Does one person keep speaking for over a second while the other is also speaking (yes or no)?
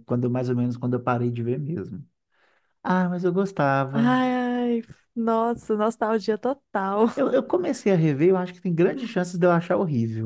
no